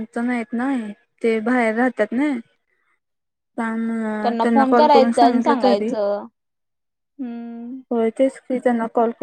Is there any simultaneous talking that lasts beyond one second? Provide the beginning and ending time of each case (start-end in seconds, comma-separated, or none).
4.5-5.9